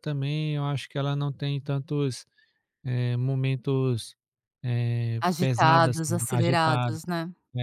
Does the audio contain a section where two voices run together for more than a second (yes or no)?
yes